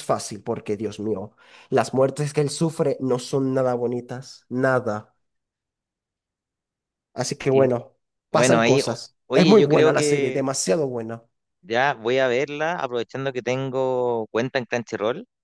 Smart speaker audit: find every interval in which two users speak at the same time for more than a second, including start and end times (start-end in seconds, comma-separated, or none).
8.3-10.4